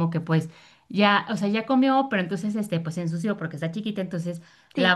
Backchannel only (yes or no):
yes